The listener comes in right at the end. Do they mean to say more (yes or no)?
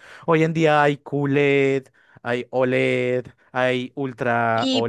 yes